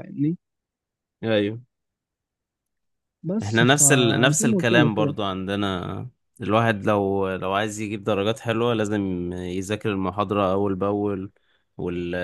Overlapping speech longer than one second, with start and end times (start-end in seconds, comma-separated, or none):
3.4-5.2